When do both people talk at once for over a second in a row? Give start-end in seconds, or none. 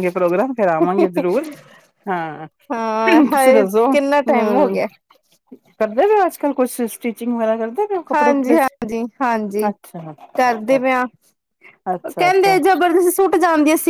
3.1-4.7